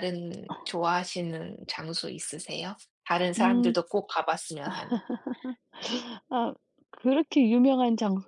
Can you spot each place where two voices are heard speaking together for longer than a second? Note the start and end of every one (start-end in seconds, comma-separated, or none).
none